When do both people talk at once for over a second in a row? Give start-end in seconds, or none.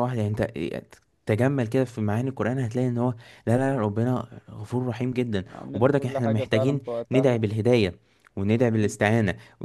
5.5-7.5